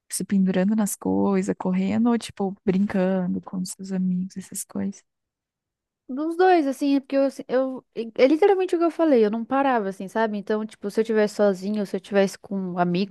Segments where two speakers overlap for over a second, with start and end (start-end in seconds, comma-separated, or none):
none